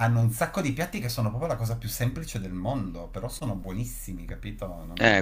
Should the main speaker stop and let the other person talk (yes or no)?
yes